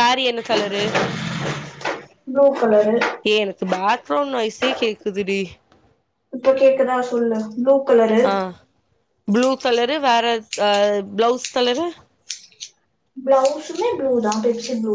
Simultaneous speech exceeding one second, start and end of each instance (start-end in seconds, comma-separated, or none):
none